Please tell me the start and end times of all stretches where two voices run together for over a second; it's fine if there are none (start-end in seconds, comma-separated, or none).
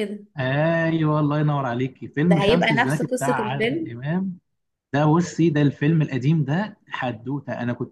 2.3-3.9